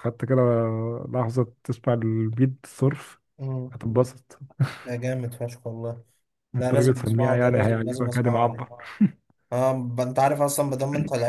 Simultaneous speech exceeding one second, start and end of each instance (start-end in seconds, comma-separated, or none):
6.6-8.7